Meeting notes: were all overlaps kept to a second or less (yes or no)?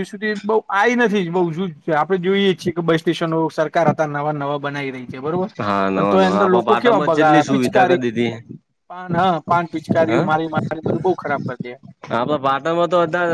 no